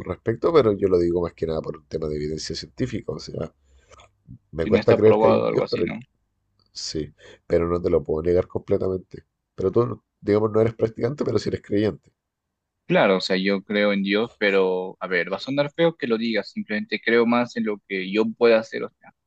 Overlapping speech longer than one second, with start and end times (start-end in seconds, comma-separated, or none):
4.6-5.8